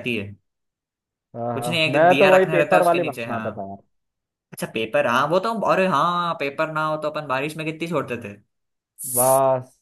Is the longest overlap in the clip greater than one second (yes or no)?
yes